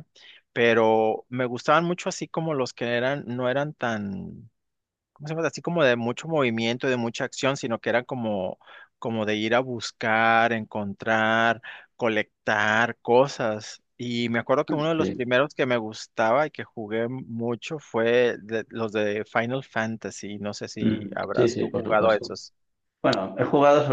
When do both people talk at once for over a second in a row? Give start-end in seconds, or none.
20.8-22.4